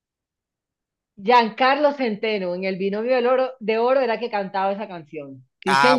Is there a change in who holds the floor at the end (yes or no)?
yes